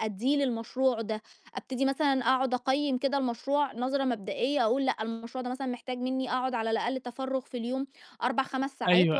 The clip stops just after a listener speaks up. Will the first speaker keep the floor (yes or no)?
yes